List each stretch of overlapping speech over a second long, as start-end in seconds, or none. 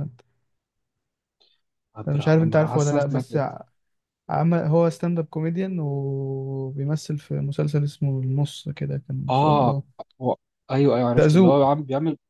2.1-3.4